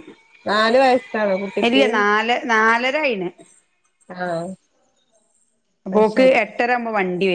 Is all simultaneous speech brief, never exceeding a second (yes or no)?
yes